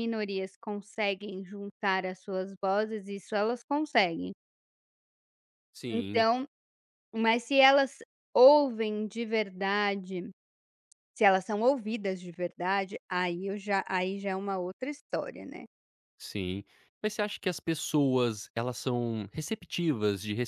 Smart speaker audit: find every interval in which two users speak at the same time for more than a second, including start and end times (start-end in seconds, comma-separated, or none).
none